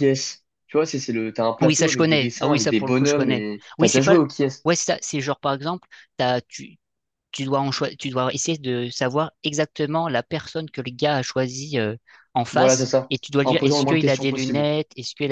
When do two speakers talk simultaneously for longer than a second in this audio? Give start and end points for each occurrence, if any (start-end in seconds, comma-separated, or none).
1.6-4.2, 12.5-14.7